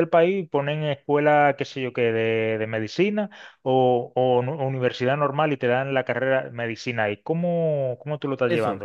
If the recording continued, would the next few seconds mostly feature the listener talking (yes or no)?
yes